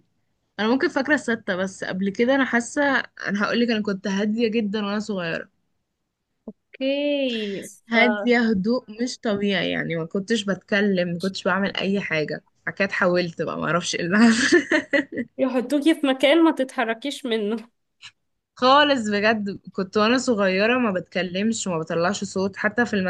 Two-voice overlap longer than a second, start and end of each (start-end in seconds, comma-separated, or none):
none